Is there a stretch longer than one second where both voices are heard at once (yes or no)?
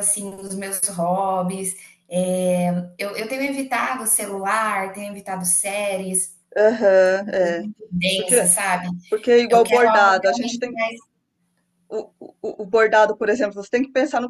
yes